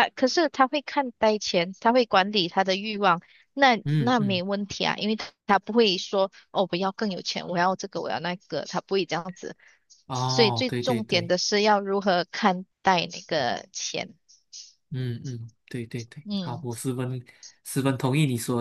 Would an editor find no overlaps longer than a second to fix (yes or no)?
no